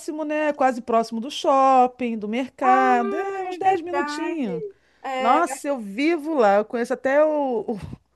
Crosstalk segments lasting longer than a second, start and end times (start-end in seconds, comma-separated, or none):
2.6-4.5